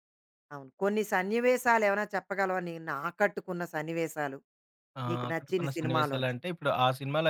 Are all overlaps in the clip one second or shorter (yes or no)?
no